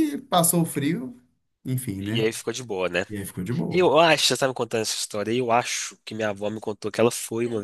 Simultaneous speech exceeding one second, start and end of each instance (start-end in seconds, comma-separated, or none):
none